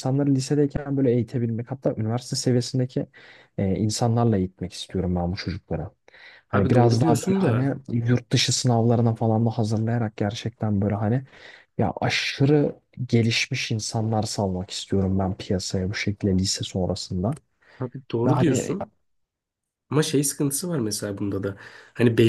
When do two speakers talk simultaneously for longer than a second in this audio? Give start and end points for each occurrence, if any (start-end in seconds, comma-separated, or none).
6.5-7.7